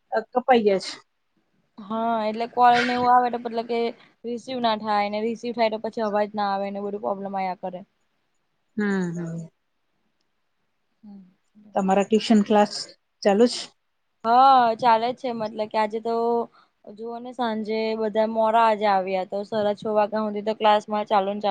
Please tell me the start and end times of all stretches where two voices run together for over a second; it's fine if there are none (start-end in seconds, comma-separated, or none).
none